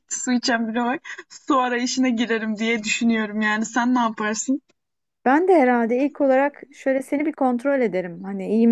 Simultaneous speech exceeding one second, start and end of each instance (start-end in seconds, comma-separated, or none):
none